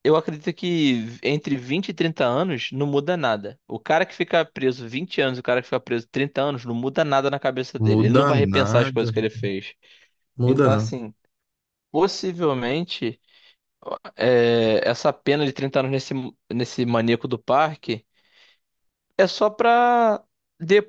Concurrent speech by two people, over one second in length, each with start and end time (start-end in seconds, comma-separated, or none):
7.9-9.1